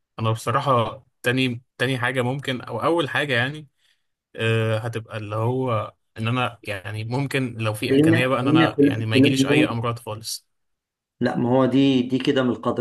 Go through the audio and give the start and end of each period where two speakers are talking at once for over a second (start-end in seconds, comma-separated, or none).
7.9-9.8